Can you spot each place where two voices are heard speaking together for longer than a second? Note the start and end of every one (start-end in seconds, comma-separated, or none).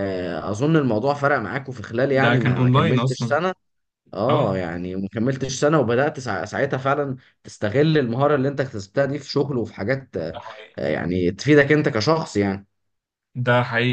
2.1-3.4